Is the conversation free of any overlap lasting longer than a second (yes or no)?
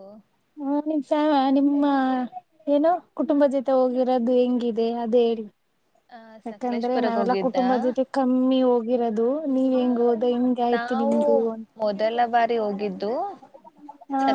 no